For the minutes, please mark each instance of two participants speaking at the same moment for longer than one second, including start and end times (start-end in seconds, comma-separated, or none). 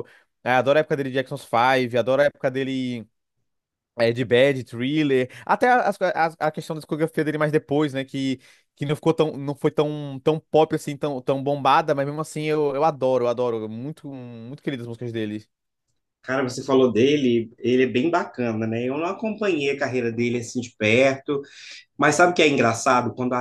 none